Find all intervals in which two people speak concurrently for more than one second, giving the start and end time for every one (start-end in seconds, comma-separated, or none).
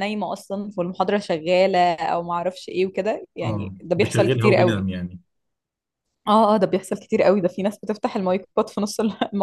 3.4-4.8